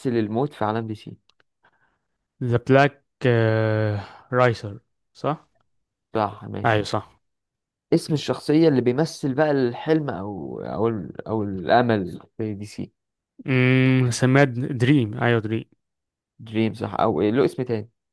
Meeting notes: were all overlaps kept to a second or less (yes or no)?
yes